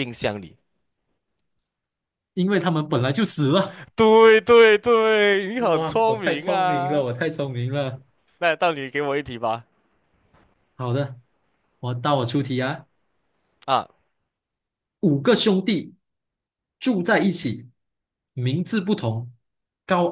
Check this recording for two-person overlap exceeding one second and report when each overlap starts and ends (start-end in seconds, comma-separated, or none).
5.7-7.0